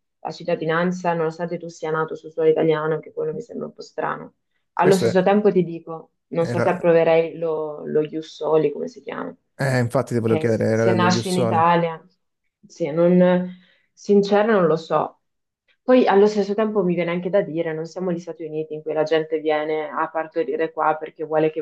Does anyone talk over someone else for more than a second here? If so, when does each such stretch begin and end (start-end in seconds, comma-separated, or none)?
10.2-11.7